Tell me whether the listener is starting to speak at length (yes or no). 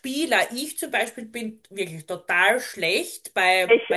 no